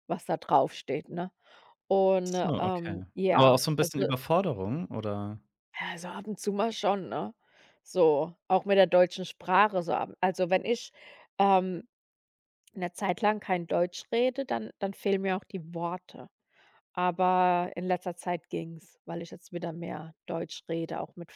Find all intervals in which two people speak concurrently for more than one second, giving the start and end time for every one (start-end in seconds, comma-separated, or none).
2.2-4.1